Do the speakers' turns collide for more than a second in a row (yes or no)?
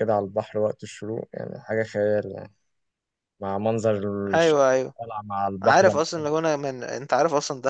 no